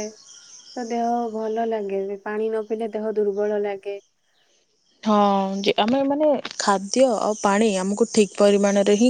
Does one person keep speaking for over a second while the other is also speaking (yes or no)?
no